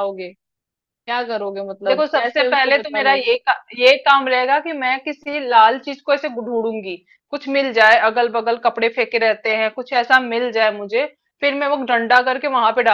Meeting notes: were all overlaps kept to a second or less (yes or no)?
no